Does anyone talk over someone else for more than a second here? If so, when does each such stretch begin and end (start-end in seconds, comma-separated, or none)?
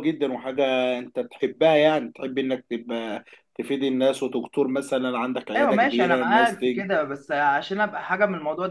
5.5-6.9